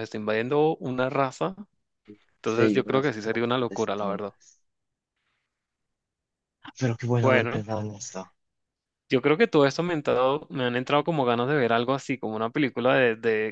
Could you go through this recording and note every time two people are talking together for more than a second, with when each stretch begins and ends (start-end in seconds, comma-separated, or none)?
2.4-4.3